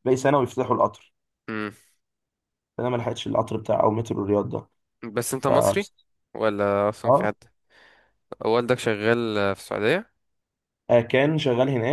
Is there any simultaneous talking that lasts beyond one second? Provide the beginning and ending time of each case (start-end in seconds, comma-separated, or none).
none